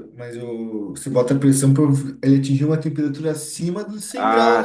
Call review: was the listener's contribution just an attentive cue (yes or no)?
no